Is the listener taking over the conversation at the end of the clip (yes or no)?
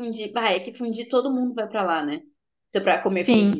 no